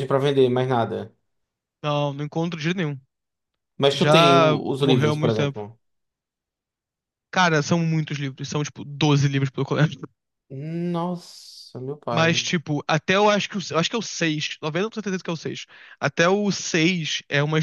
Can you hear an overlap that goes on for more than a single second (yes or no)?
yes